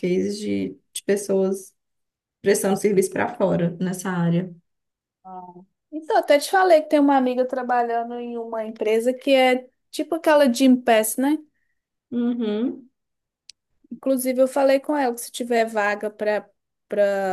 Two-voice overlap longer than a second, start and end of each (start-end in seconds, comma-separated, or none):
none